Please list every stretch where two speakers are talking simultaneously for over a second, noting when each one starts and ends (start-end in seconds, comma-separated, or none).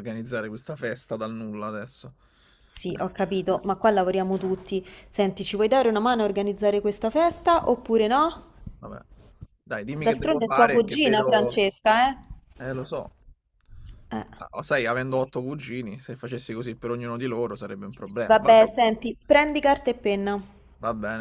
10.1-11.6